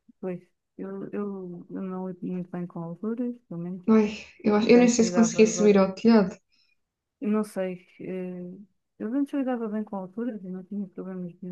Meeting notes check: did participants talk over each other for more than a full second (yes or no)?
yes